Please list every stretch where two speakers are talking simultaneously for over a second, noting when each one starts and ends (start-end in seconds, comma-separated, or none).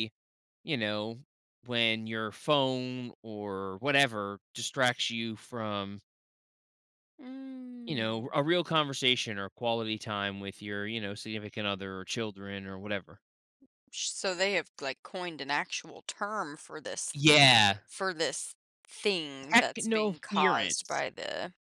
19.5-21.0